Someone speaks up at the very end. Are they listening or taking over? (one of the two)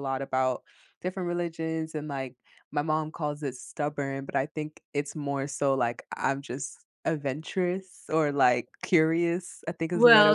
taking over